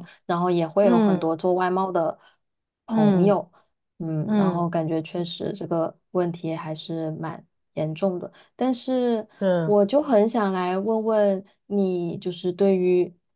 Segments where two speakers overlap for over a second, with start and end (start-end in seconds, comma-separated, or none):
none